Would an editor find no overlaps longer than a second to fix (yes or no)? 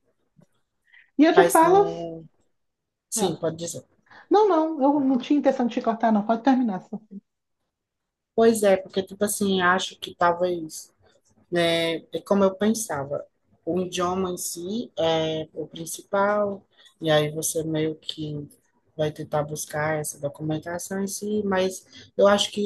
yes